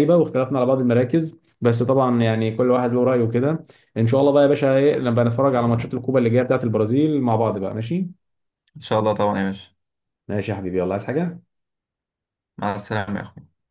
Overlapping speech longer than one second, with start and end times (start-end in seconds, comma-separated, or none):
none